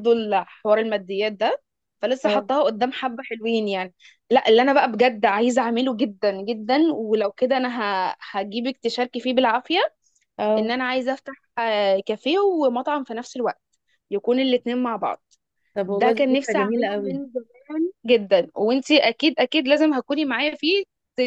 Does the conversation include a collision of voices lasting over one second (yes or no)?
yes